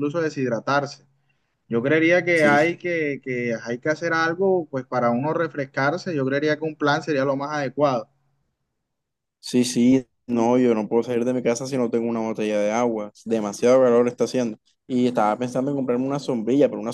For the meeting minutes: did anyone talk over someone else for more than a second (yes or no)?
no